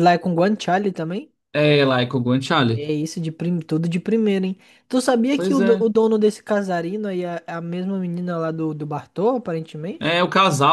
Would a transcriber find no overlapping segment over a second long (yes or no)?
yes